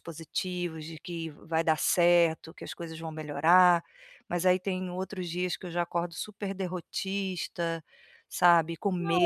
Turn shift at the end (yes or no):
yes